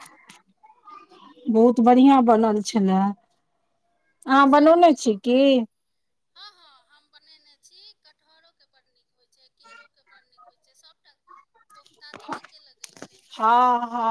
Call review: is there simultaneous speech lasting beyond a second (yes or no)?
no